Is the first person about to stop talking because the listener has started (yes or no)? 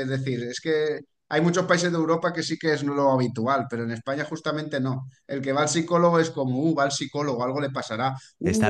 no